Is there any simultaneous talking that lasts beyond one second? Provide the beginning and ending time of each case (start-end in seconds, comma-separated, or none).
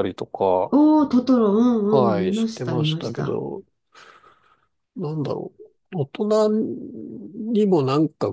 2.0-3.4